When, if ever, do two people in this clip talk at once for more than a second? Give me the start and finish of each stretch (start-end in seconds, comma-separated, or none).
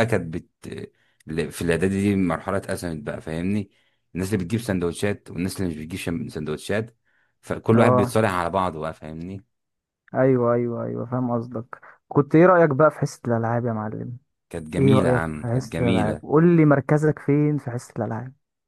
14.8-16.2